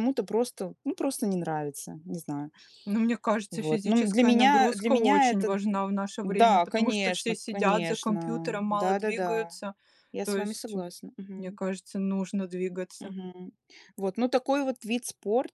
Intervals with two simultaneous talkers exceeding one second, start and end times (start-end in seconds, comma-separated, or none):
3.5-5.6, 6.2-9.6